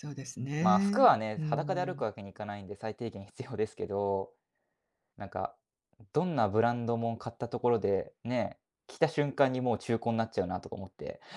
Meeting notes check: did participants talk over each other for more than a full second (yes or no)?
yes